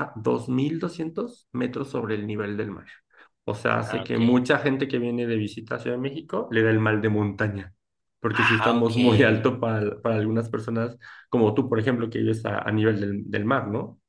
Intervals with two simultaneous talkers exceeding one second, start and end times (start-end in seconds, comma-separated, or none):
8.3-9.5